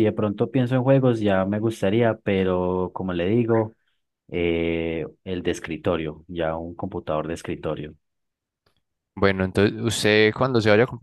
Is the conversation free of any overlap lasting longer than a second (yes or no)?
yes